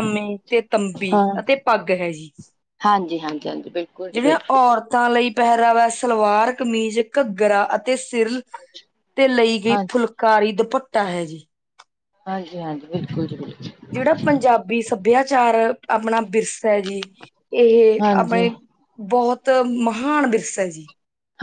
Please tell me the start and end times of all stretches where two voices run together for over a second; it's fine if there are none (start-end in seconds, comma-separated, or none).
none